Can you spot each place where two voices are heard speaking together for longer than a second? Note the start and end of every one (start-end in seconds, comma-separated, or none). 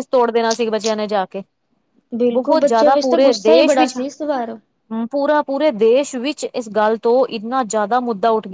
2.3-4.0